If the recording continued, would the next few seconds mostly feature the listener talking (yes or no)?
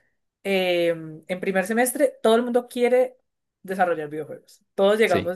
no